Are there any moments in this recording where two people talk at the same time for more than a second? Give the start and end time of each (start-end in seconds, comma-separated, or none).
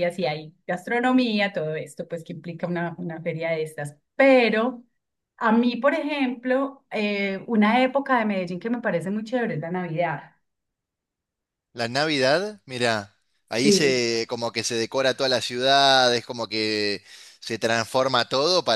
none